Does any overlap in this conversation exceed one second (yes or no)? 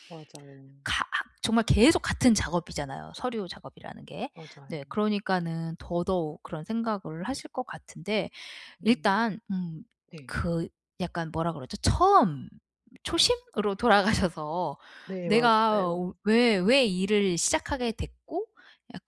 no